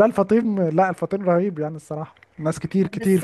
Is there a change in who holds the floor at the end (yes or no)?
yes